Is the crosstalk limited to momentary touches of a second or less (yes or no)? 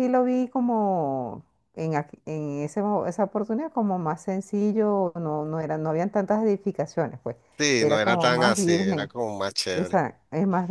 no